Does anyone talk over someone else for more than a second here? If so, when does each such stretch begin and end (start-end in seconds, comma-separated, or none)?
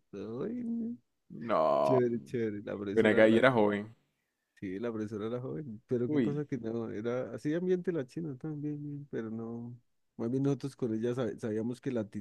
none